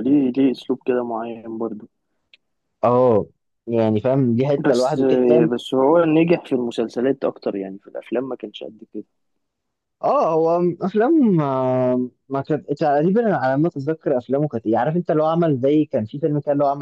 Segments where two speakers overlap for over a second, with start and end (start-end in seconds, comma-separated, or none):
none